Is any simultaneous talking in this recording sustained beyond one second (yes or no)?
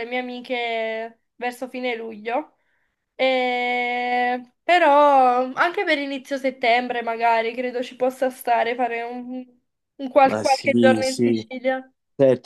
yes